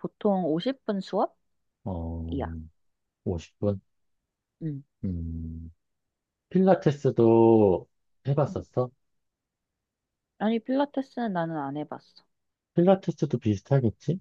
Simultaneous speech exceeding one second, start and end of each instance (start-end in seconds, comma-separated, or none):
none